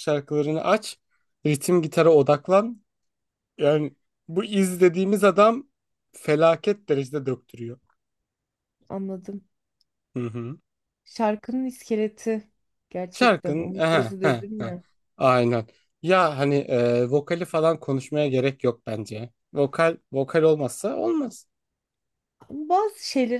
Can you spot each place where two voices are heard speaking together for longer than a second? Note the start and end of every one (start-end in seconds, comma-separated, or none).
13.1-14.8